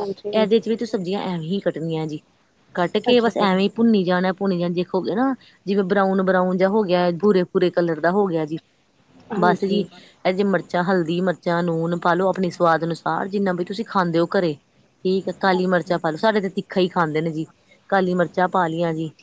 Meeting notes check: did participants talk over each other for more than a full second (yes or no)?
no